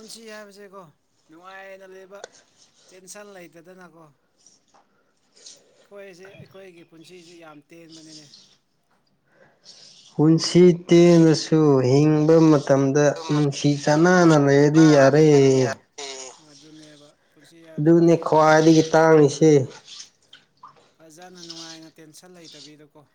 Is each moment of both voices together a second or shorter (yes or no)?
no